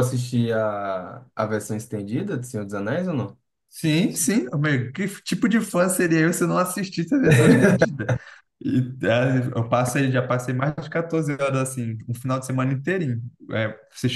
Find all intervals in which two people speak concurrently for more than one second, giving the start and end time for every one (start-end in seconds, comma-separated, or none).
none